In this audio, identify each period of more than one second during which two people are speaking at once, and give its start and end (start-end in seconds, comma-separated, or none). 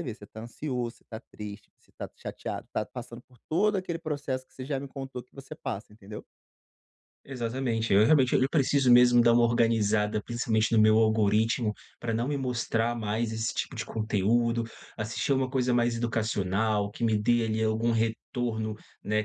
none